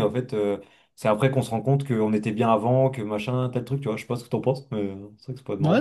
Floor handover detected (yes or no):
yes